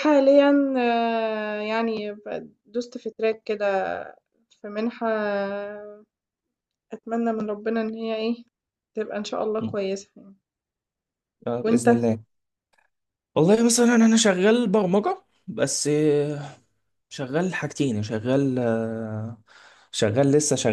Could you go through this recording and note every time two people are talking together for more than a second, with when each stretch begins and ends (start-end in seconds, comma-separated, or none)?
none